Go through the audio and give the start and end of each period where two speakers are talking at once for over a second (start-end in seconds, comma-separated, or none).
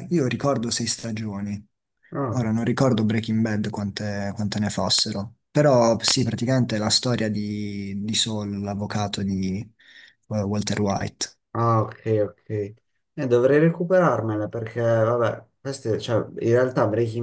none